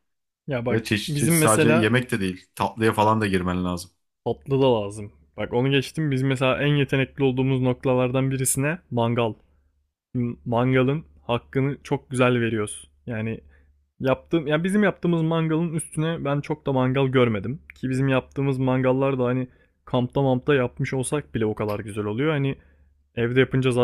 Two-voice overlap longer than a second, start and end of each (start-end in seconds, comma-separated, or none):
0.7-1.9